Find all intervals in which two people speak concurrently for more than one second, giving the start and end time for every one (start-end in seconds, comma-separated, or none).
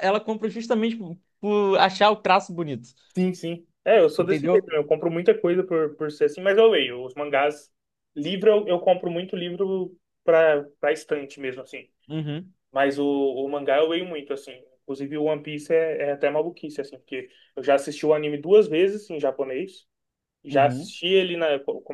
none